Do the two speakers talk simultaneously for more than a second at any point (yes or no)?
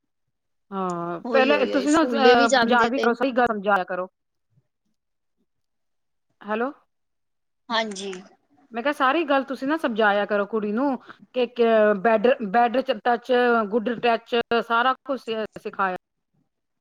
yes